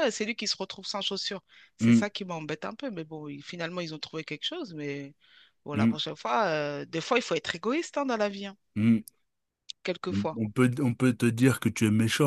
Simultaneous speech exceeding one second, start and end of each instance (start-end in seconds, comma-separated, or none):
none